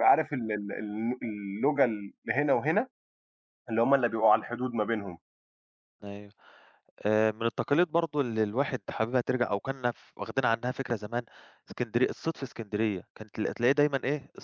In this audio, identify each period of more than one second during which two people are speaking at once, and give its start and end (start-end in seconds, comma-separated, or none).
none